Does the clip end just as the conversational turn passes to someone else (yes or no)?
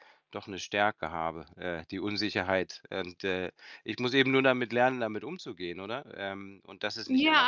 yes